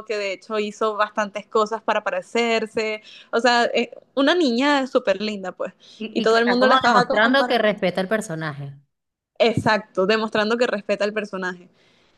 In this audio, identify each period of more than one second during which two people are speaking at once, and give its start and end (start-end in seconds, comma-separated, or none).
6.1-7.6